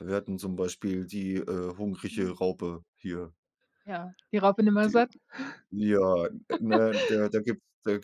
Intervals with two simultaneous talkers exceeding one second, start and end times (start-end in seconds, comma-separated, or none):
none